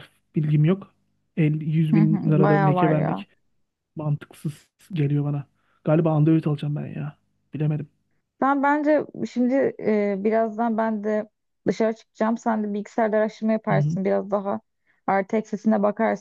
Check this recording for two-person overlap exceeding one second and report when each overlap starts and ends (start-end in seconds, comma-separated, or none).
1.9-3.2